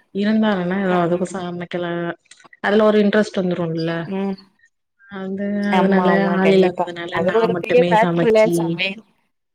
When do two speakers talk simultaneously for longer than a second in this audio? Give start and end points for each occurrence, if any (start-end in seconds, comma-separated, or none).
5.8-8.5